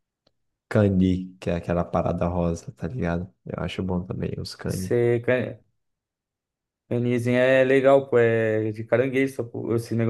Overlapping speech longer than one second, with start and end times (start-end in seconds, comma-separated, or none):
none